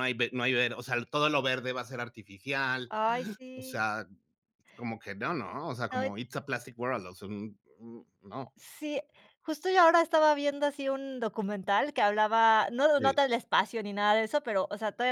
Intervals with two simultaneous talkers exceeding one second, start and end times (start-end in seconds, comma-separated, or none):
none